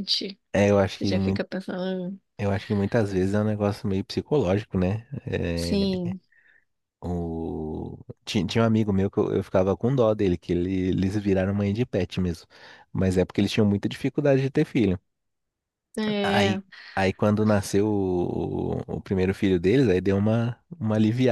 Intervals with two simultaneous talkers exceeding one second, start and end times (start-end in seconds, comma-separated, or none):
none